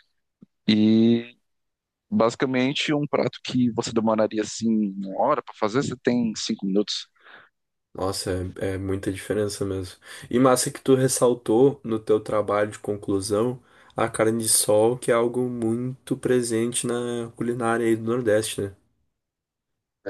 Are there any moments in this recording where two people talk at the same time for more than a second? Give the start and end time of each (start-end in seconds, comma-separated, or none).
none